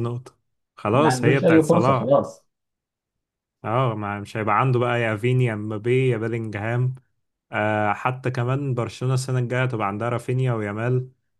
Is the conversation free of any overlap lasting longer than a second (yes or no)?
no